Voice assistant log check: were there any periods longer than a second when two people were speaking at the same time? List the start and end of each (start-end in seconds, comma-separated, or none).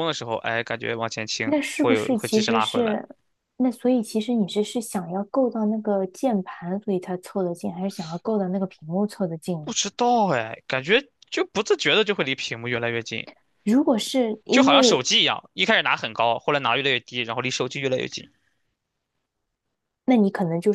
1.4-3.0